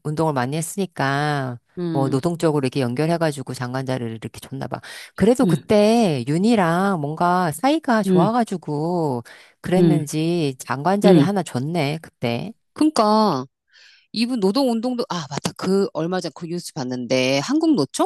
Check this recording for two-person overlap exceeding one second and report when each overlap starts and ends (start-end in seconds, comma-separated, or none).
none